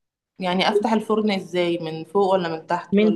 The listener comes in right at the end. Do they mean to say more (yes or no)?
yes